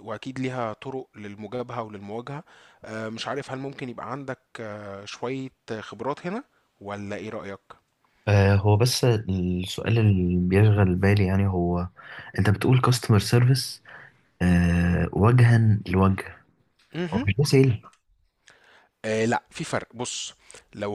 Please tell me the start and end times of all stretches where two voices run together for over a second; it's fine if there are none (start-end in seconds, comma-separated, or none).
none